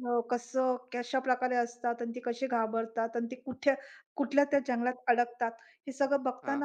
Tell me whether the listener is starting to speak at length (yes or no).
no